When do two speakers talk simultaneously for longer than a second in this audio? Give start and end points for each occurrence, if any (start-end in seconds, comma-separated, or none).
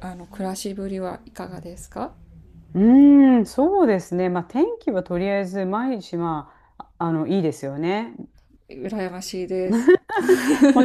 none